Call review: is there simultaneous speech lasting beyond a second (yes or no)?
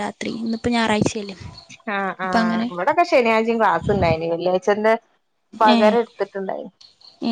no